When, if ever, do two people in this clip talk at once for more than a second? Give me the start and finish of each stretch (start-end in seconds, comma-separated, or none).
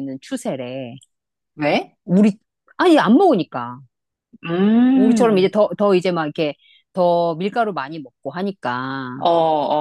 none